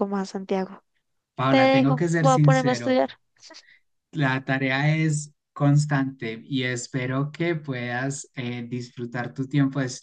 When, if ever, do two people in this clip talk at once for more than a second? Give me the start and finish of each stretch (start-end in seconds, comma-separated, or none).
1.5-3.0